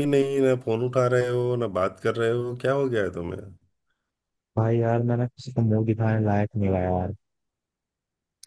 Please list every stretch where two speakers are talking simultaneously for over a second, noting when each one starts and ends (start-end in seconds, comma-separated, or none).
none